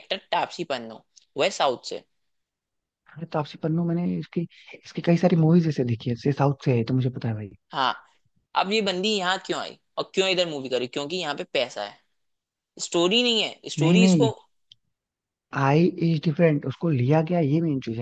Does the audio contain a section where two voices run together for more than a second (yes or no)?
no